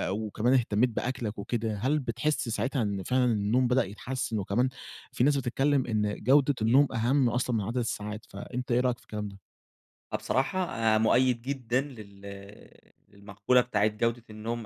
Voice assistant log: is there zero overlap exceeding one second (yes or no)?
yes